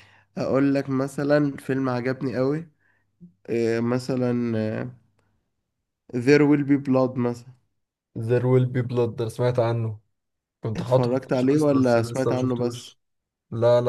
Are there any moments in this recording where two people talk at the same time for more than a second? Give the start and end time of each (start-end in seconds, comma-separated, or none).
10.8-12.9